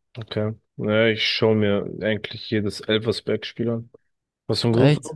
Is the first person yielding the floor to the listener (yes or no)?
no